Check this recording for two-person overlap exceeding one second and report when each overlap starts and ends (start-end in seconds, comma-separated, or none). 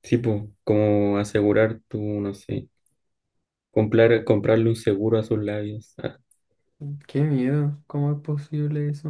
none